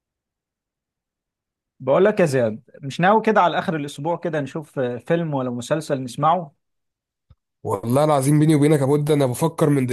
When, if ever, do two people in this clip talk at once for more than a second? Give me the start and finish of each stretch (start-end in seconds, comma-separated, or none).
none